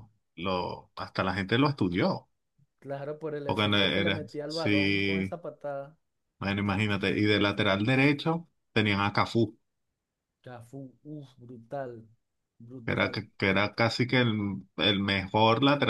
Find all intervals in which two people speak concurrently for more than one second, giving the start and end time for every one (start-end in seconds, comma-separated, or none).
3.4-5.4